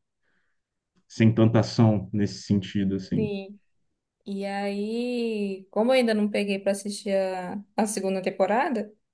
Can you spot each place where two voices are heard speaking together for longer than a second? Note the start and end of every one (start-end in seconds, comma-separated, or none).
none